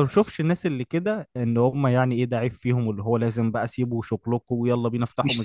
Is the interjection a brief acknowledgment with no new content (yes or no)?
no